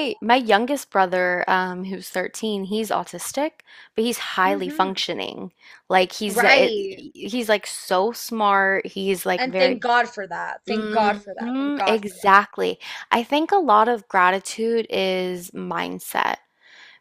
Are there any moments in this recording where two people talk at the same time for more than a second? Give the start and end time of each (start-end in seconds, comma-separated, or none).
10.7-12.1